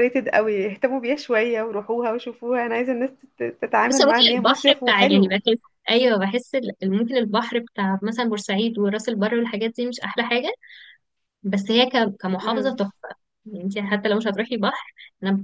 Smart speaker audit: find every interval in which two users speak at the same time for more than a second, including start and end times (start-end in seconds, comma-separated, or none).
3.9-5.4